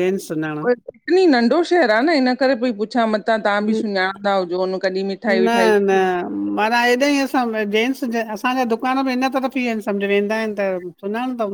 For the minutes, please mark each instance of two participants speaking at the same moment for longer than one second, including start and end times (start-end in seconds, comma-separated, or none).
none